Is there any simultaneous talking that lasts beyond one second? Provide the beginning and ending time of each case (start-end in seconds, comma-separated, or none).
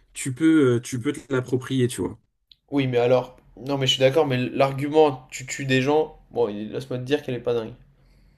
none